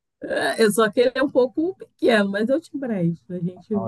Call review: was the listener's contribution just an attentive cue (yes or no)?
no